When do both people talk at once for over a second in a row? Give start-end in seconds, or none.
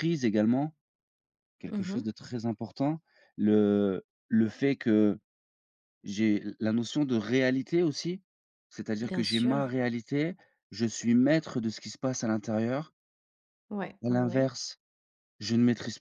none